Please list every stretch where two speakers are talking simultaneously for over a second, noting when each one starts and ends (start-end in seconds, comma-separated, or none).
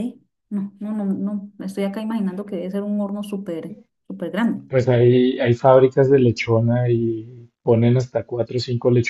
none